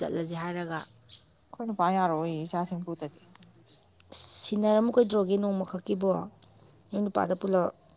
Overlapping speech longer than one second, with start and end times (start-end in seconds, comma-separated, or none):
none